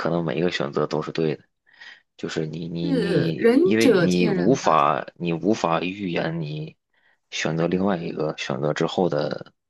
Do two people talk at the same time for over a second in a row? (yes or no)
yes